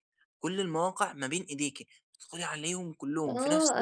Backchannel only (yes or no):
no